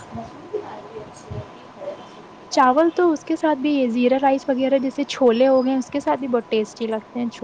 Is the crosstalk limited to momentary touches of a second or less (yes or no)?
yes